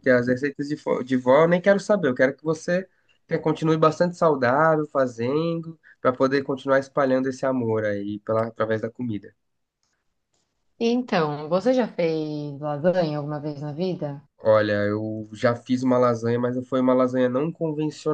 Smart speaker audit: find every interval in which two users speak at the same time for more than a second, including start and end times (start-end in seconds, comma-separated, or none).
none